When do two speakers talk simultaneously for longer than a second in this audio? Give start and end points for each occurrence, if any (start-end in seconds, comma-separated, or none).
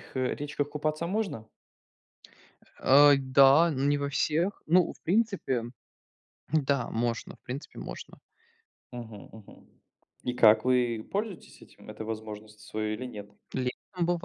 none